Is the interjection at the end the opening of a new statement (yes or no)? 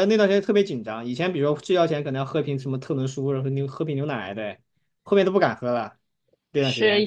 yes